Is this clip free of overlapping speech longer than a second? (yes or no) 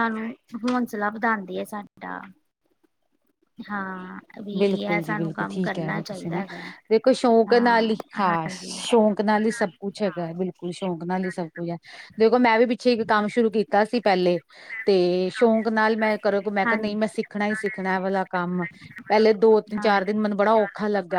no